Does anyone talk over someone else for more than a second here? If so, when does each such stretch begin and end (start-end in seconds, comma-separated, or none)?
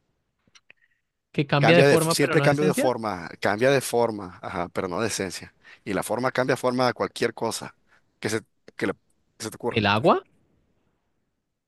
1.6-2.9